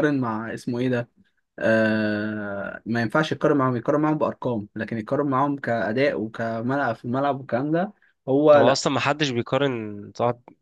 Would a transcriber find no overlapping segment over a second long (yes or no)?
yes